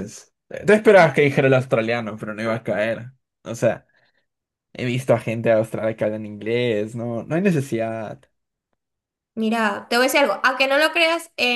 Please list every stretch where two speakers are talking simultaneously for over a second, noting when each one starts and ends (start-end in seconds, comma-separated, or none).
none